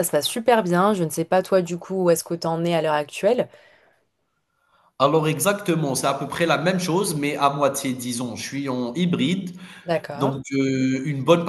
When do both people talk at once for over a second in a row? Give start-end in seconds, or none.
none